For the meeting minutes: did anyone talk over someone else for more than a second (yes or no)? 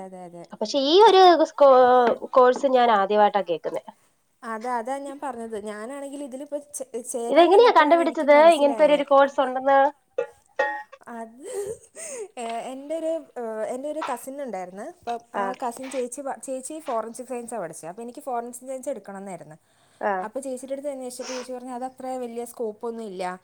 yes